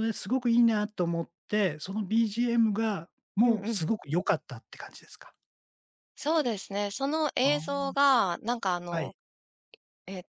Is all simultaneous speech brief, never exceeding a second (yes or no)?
yes